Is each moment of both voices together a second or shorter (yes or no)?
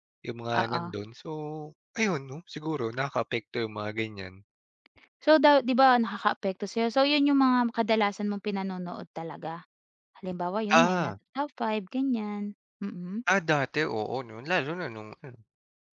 yes